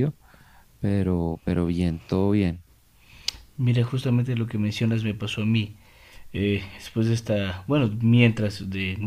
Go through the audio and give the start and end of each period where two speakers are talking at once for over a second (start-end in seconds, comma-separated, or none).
none